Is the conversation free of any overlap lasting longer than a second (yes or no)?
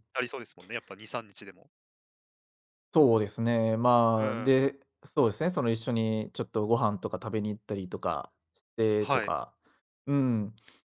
yes